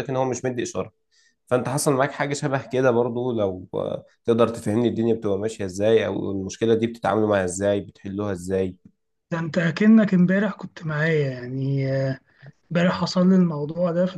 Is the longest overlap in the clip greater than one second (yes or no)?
no